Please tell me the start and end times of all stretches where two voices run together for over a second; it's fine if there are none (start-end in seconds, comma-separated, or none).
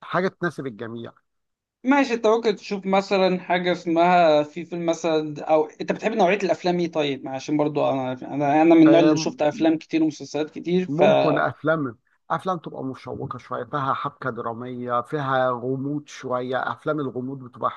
none